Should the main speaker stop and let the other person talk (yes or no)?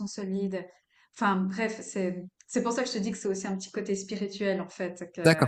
yes